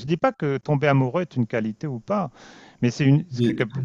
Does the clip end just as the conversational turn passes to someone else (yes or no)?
no